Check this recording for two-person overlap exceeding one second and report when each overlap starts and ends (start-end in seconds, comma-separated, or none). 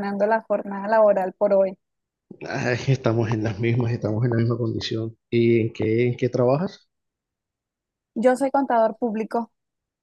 none